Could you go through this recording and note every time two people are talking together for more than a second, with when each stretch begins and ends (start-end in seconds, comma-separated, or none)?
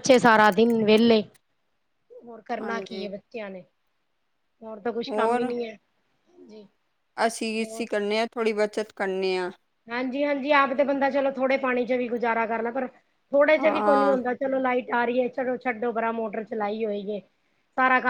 none